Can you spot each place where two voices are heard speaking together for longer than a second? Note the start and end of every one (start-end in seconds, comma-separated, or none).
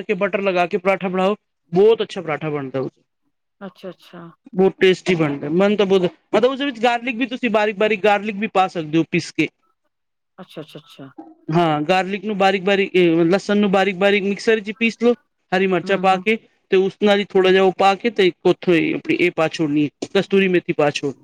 none